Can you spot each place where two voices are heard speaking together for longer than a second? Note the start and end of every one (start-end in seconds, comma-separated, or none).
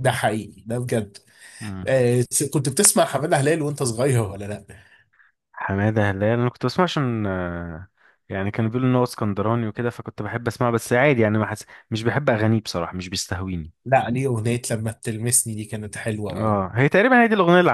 none